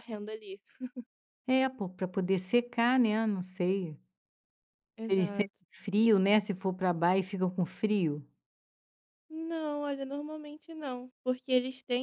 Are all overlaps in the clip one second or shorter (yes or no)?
yes